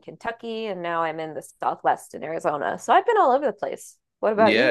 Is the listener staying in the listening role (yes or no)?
no